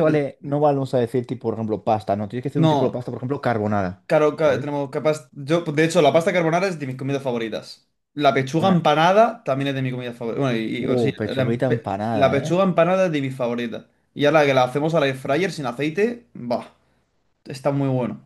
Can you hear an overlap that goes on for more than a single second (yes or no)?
yes